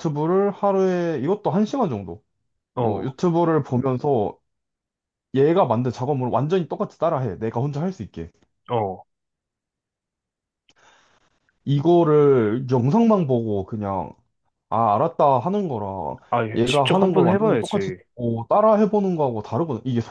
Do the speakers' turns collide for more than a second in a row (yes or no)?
yes